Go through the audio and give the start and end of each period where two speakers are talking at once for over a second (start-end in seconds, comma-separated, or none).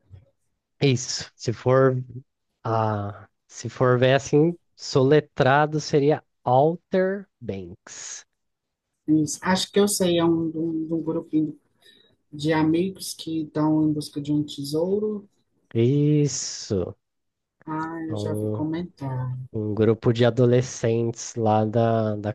none